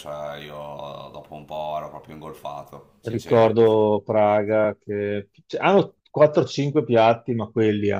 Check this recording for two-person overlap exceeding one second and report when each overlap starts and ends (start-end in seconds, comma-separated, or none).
none